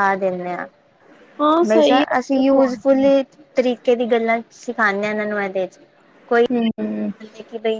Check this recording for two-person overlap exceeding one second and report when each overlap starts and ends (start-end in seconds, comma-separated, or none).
1.7-3.1